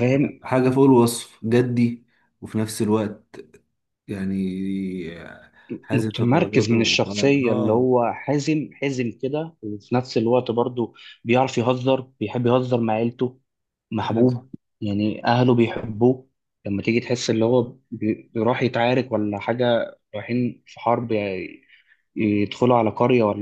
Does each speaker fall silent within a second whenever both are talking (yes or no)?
no